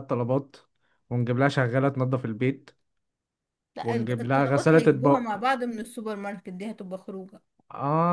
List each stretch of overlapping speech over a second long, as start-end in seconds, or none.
3.8-5.4